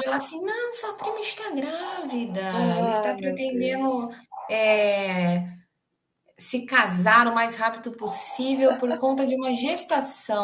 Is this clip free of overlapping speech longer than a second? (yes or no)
no